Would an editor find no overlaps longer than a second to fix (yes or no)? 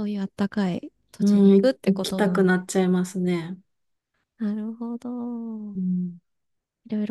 no